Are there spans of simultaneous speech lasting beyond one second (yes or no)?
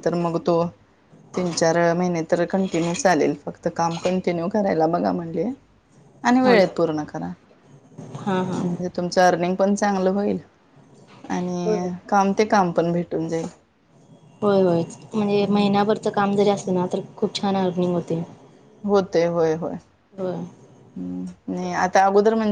no